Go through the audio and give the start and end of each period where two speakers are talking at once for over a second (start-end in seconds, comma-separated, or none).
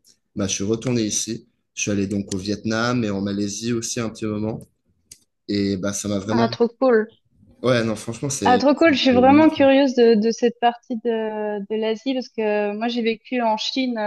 8.4-9.7